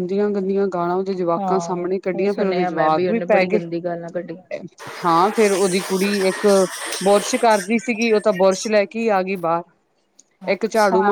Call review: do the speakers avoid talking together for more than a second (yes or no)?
no